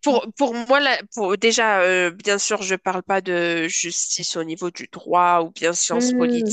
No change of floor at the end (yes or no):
yes